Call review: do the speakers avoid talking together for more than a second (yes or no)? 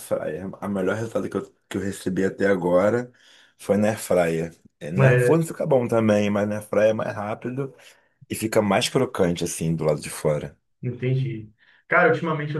yes